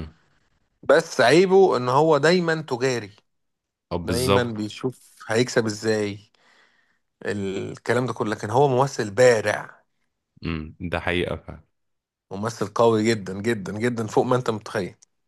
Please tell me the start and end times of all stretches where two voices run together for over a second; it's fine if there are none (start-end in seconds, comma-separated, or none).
none